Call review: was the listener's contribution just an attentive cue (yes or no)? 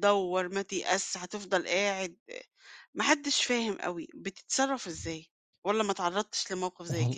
no